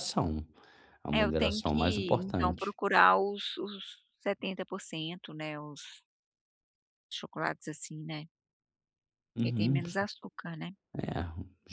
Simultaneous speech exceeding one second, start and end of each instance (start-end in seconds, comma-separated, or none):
1.1-2.8